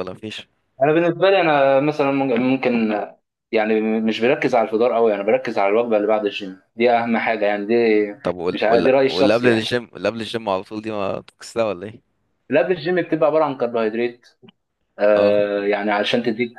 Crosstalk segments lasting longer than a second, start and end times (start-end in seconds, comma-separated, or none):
8.5-9.7